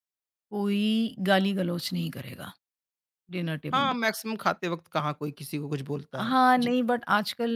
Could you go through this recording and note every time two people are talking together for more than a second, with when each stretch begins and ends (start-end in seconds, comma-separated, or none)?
none